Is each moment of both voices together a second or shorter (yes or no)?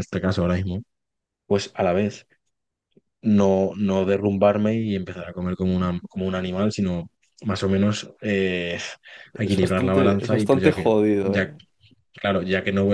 no